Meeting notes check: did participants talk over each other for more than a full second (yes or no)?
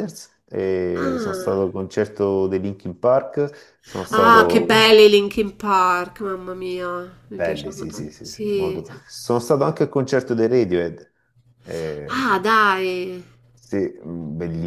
yes